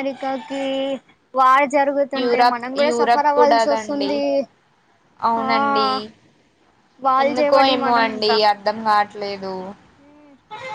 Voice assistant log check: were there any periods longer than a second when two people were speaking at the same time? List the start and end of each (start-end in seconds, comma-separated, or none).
2.2-4.1